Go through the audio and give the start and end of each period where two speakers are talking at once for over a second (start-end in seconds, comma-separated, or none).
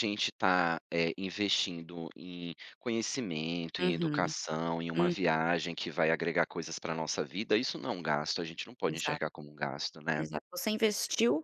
none